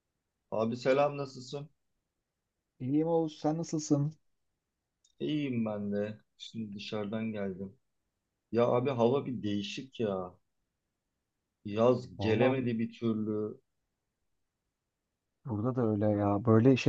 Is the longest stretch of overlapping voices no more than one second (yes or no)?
yes